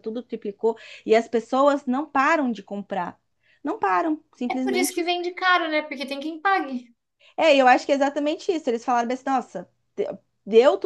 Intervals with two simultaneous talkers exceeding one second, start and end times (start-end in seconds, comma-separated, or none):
none